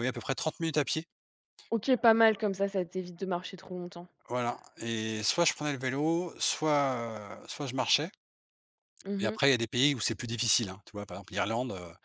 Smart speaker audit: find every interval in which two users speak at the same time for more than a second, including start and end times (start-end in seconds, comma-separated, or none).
none